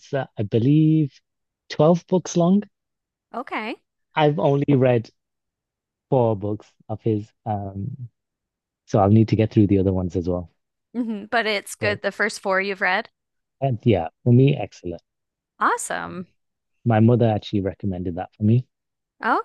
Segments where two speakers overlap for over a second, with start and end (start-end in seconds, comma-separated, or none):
none